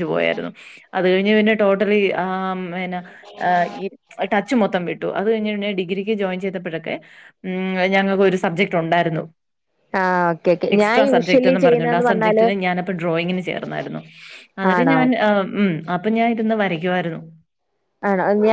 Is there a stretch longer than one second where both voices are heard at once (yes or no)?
yes